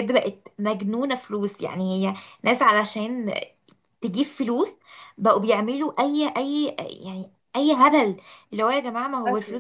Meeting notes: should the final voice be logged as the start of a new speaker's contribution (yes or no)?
no